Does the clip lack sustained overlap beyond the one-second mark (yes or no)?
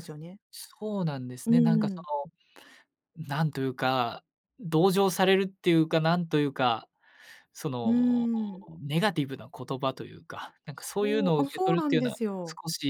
no